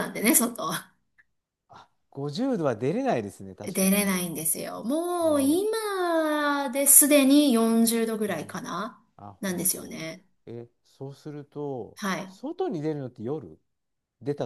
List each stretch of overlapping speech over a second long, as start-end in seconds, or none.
none